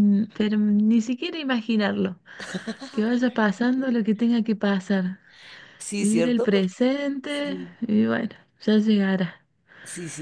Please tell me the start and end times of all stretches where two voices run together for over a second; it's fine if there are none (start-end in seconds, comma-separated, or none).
6.0-7.8